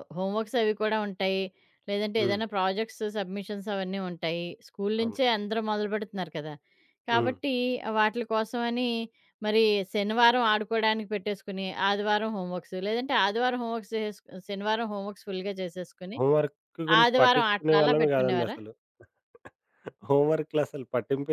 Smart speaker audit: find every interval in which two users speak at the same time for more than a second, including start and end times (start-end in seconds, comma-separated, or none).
17.0-18.6